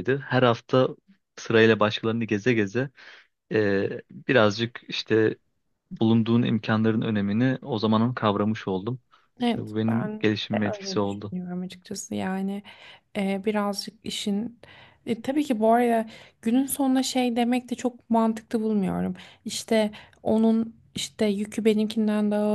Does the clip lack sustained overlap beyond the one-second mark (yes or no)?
no